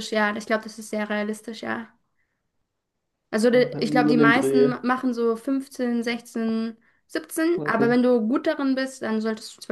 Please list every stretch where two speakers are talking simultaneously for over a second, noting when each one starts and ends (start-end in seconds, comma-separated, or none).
3.5-4.7